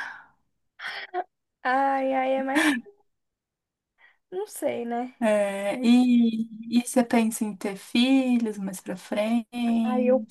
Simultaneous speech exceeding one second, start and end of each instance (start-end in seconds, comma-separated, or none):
none